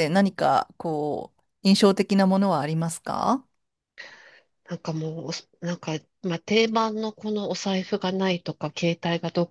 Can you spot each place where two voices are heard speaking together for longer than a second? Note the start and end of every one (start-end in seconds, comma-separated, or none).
none